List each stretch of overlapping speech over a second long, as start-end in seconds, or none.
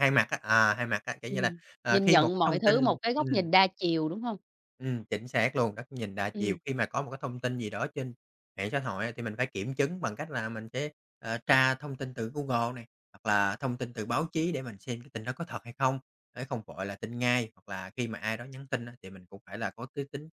1.3-3.3